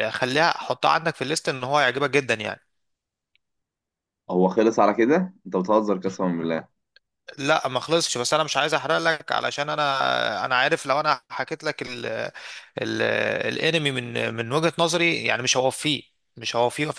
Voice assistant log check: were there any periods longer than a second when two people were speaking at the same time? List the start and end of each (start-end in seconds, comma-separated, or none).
none